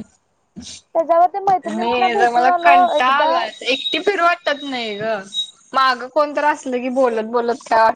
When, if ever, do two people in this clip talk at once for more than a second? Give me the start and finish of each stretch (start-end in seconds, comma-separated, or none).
1.7-3.3